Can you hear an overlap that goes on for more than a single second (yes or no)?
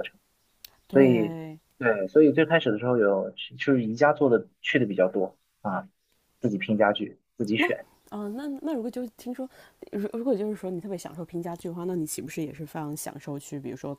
no